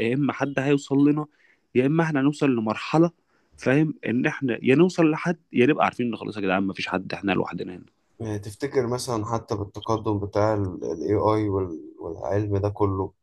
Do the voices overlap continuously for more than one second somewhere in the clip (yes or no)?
no